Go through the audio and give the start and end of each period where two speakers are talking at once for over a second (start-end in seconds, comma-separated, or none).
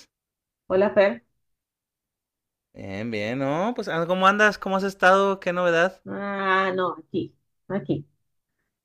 none